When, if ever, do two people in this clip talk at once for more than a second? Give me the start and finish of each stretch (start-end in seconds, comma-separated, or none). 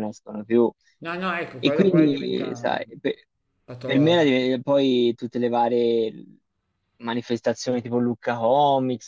1.6-2.8